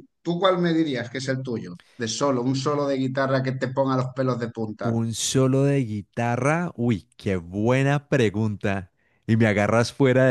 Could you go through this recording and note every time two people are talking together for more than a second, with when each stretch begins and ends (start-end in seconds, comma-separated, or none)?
none